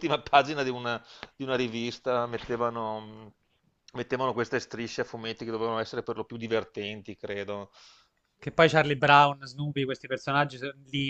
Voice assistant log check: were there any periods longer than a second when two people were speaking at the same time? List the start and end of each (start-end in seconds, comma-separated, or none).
none